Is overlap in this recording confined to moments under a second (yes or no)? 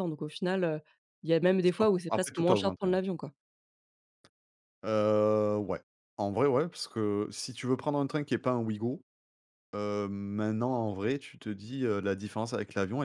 no